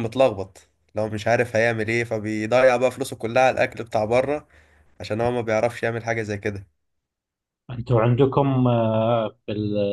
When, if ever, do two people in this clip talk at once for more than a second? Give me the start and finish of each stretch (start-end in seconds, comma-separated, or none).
none